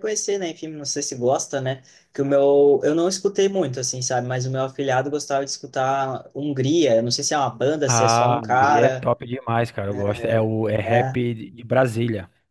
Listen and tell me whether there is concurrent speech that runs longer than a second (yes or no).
yes